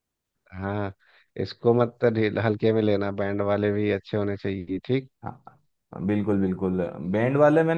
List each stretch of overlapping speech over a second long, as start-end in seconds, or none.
none